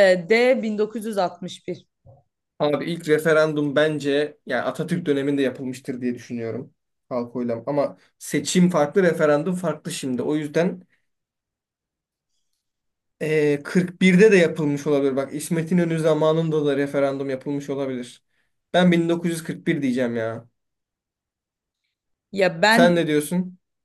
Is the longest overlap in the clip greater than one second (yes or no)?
no